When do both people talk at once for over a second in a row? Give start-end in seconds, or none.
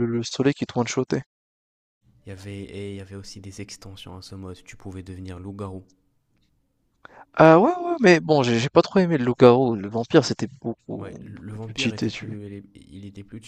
11.2-12.4